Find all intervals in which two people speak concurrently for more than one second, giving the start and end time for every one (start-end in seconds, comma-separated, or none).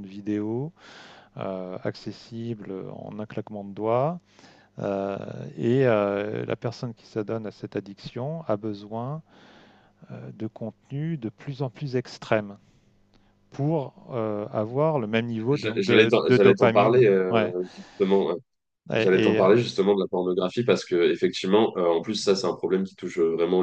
15.5-17.5